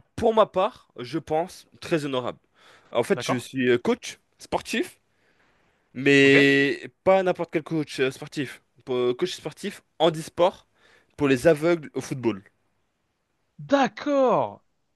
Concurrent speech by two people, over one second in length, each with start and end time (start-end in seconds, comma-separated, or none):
none